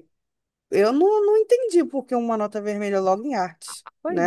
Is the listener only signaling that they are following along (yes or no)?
no